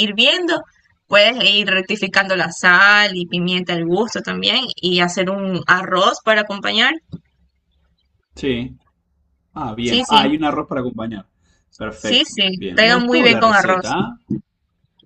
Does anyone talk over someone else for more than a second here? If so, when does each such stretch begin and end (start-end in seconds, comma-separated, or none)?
11.9-13.9